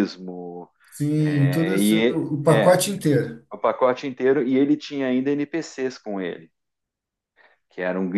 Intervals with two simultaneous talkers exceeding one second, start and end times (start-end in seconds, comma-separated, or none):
1.2-2.8